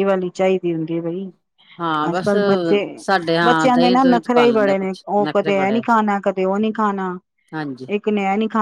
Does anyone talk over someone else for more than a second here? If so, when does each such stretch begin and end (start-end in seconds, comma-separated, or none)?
3.4-5.8